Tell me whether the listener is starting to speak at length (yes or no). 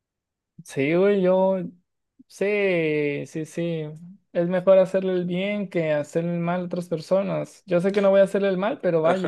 yes